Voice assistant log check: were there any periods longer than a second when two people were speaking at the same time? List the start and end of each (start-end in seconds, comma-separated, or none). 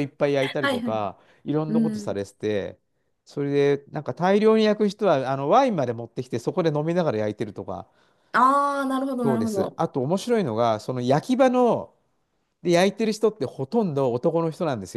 none